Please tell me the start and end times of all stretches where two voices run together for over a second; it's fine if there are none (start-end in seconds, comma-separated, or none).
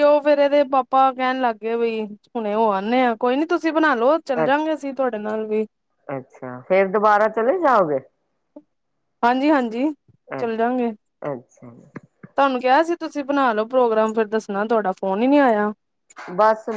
none